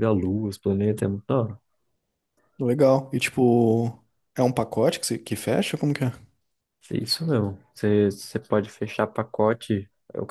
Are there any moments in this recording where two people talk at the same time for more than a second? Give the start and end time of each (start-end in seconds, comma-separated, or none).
none